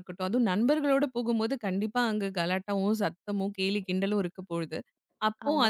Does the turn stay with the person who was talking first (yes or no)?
yes